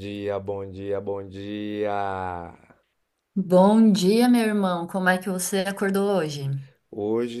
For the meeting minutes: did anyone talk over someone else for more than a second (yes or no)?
no